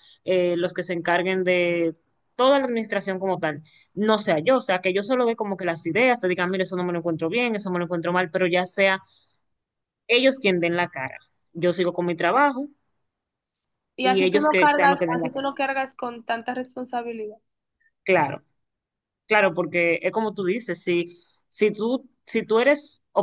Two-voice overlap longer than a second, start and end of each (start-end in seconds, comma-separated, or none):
14.0-15.5